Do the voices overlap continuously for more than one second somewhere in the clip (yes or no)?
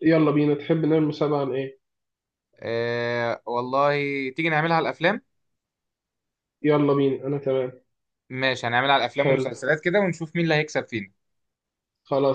no